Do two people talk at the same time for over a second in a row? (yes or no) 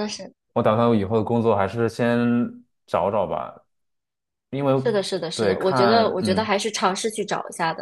yes